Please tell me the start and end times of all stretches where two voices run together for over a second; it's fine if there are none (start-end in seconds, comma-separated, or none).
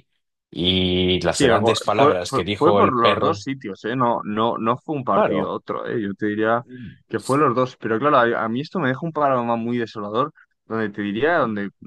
1.3-3.4